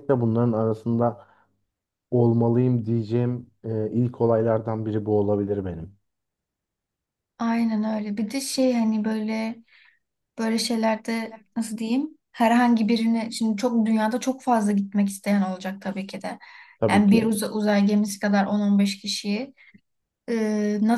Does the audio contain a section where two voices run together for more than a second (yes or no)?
no